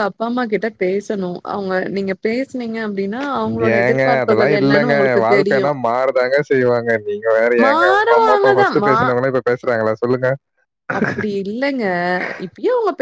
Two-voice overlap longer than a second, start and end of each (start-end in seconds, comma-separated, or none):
3.8-5.7